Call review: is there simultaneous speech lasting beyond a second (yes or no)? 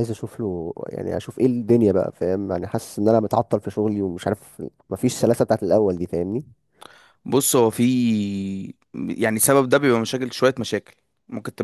no